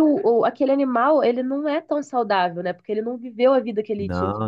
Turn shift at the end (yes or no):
no